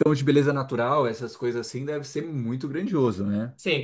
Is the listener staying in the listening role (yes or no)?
no